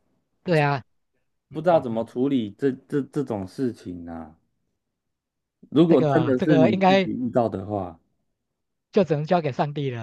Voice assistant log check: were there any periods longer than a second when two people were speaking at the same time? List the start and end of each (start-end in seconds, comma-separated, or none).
5.9-7.1